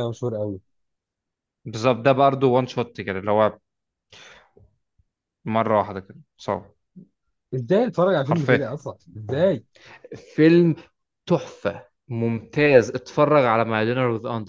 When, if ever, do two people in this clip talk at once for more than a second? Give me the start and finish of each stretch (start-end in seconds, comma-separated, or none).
none